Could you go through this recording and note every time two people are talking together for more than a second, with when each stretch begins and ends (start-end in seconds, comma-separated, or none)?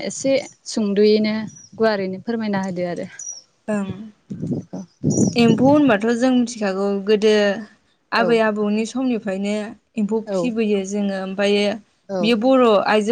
none